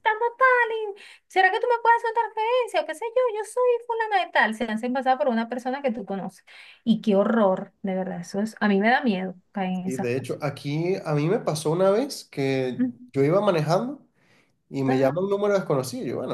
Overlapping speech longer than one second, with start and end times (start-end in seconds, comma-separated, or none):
none